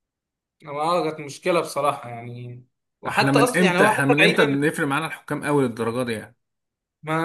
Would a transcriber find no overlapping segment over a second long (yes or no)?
no